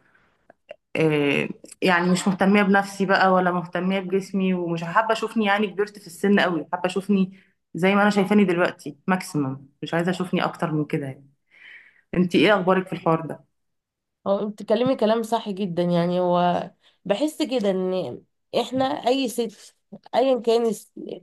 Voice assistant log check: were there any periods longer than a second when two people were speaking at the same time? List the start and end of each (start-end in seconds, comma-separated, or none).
none